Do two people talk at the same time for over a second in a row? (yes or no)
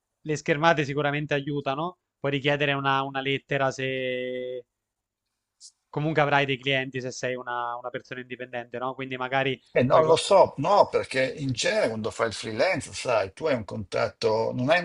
no